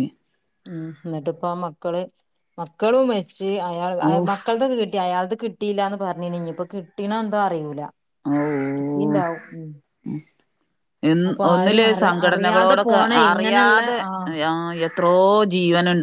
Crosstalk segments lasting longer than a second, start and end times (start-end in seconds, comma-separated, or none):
11.3-14.0